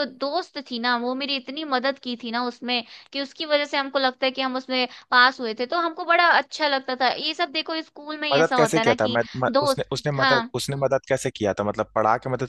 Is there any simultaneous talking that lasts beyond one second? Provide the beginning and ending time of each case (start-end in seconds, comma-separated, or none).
8.3-10.5